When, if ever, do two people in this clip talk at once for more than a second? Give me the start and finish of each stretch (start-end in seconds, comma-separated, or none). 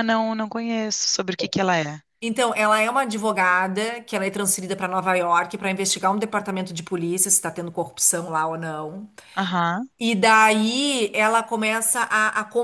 none